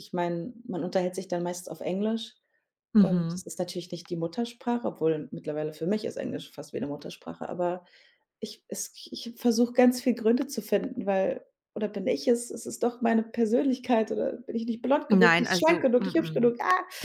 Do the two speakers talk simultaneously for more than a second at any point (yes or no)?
yes